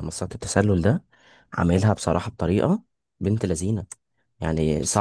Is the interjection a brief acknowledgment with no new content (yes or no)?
yes